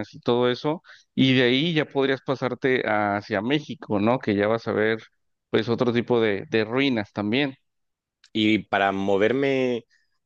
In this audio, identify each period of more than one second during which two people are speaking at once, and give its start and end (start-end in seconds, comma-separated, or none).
none